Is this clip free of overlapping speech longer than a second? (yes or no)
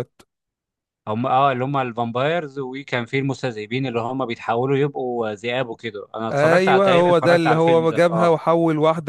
no